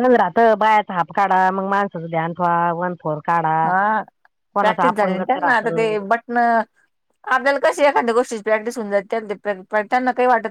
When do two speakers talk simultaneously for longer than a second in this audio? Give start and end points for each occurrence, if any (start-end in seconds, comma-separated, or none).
4.6-5.9